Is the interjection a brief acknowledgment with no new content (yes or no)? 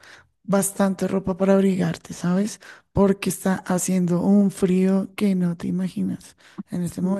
yes